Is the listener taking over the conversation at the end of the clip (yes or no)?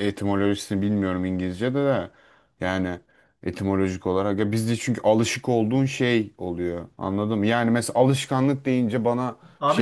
yes